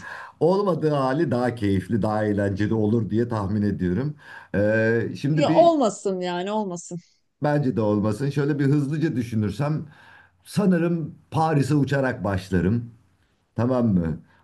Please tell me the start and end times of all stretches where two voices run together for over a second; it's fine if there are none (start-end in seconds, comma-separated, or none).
none